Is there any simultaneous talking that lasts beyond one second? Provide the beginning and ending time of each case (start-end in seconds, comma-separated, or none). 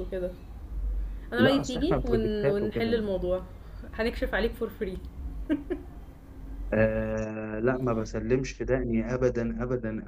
1.4-3.0